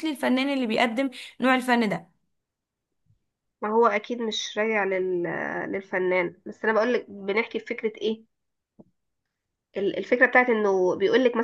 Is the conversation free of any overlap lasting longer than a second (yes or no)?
yes